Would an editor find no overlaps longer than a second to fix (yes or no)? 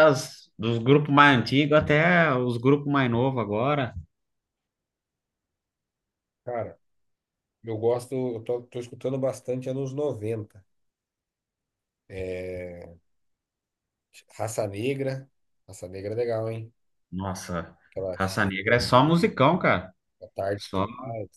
no